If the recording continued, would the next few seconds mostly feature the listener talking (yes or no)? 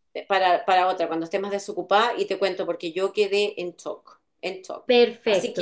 no